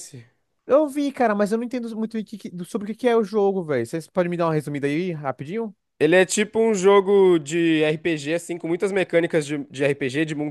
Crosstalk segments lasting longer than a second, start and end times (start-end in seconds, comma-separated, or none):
none